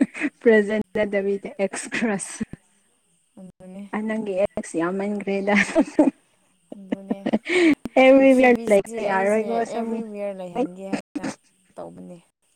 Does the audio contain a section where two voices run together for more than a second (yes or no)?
yes